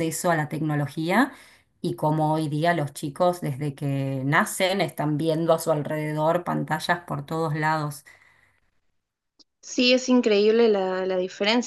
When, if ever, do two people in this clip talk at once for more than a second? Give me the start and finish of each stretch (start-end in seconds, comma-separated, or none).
none